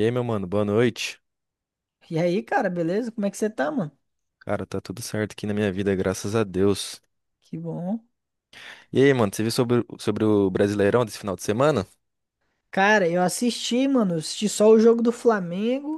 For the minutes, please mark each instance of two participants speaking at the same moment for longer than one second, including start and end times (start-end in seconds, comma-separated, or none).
none